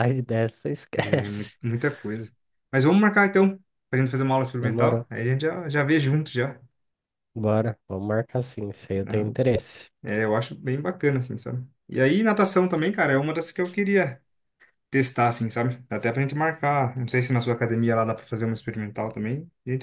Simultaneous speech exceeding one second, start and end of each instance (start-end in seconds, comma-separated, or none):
none